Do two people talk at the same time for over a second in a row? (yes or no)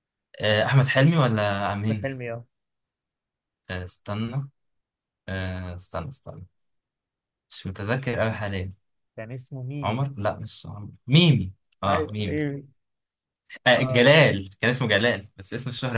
no